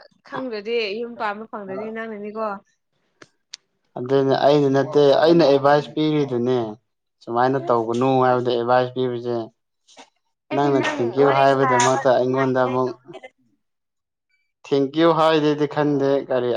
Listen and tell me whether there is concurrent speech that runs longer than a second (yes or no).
yes